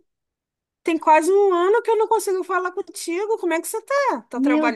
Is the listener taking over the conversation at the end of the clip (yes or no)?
yes